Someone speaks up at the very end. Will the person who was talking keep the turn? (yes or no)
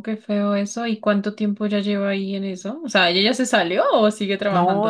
no